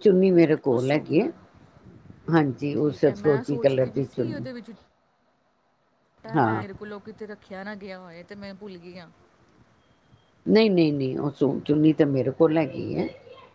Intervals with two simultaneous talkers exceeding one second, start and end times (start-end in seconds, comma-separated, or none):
2.8-4.5